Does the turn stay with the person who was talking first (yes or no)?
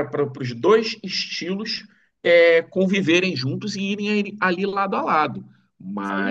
yes